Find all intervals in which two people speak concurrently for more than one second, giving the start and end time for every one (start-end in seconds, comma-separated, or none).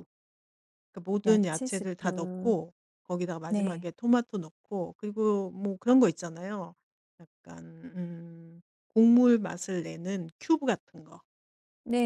1.2-2.5